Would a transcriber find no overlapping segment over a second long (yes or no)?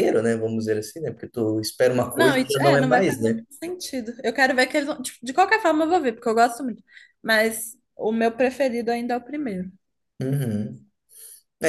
no